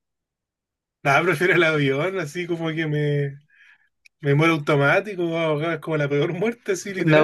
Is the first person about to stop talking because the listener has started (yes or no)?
yes